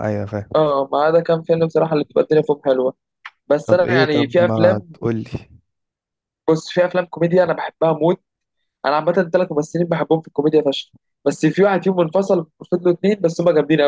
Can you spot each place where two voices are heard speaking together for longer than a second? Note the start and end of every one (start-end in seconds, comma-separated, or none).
3.6-4.9